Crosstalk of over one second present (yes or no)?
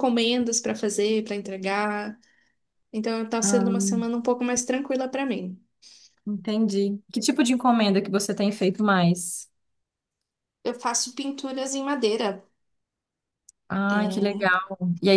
no